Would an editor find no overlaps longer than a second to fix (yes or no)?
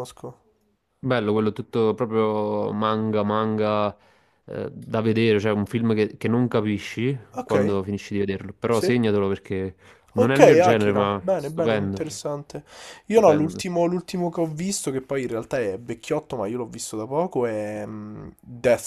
no